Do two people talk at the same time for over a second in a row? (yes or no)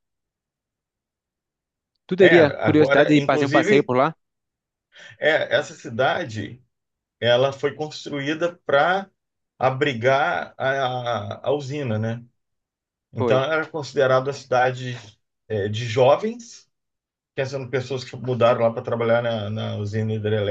yes